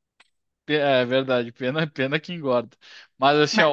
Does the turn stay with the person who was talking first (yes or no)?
yes